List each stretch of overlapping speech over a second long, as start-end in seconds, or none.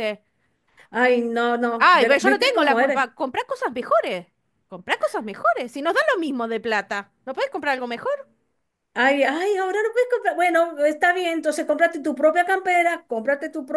1.8-3.1